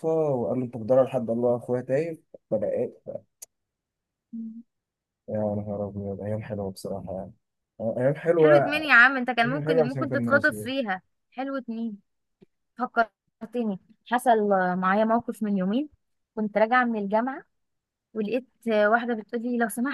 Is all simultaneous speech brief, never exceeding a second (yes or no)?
no